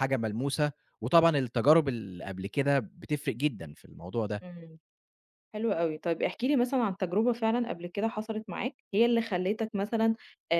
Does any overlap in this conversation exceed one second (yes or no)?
no